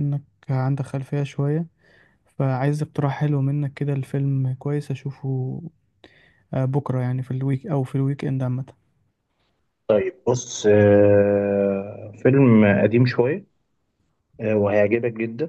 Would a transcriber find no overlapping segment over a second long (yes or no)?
yes